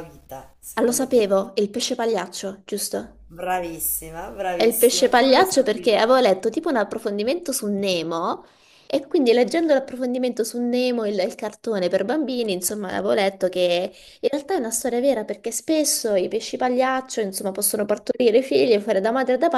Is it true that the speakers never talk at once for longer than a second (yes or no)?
no